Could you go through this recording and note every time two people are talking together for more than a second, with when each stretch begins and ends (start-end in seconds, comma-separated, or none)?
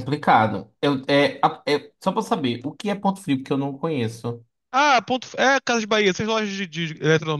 none